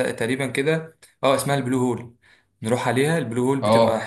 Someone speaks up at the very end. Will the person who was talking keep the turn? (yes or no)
yes